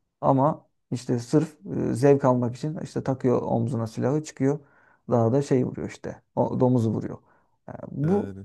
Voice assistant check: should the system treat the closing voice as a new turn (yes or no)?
no